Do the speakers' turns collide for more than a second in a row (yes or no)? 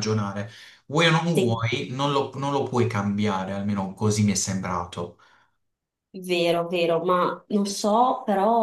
no